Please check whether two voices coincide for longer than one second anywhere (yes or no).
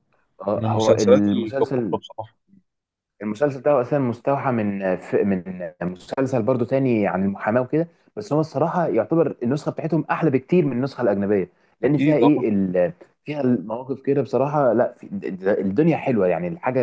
yes